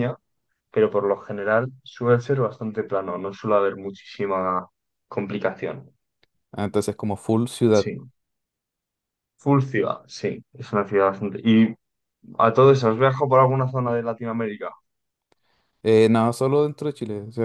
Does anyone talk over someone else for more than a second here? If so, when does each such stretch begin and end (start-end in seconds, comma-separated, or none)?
none